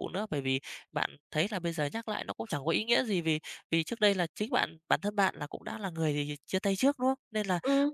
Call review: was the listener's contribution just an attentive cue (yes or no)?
yes